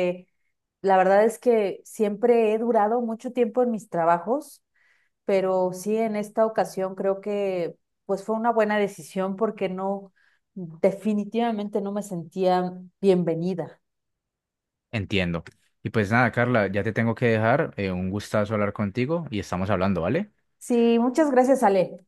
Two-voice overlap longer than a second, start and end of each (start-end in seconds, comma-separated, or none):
none